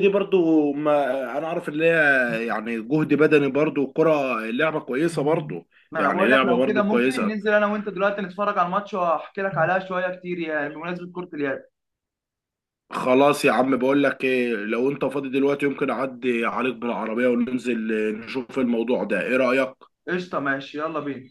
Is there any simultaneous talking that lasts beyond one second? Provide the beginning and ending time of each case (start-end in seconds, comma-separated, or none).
5.9-7.4